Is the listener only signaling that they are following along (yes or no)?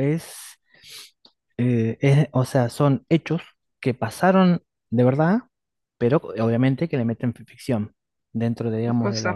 yes